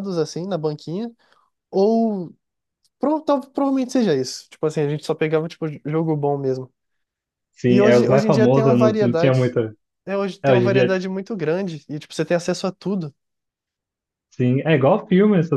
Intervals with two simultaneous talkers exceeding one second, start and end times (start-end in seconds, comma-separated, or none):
7.7-9.6